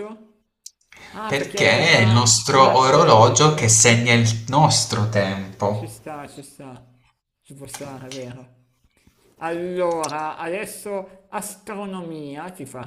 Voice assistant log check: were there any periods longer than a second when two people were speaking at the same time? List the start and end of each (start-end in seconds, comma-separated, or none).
1.3-3.5